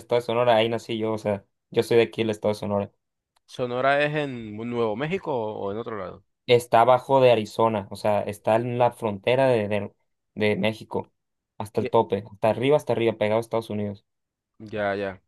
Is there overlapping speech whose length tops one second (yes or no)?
no